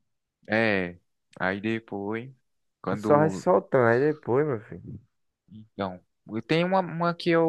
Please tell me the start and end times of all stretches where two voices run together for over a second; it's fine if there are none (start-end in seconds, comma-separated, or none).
none